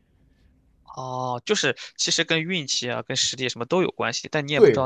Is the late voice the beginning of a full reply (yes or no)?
yes